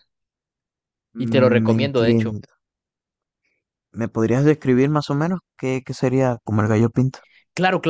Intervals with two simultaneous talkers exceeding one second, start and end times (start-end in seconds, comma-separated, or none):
1.1-2.4